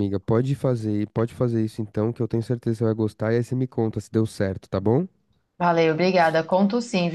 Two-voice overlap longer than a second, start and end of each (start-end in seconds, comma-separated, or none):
none